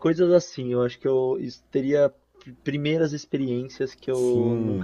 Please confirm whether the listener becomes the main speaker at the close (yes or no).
yes